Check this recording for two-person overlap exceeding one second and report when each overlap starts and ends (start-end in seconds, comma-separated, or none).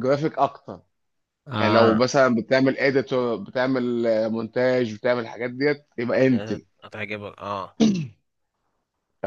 none